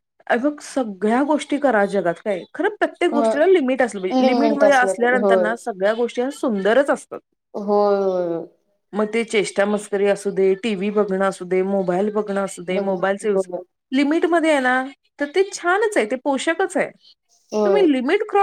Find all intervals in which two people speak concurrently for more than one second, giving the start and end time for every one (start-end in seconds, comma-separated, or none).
4.2-5.4